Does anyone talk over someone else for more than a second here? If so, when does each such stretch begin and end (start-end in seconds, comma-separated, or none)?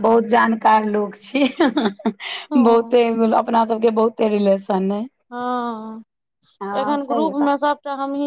none